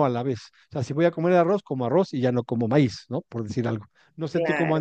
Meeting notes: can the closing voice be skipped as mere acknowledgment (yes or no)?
yes